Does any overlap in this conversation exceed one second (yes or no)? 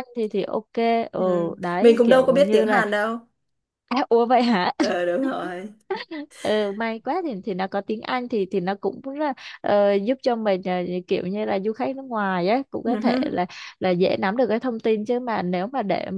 yes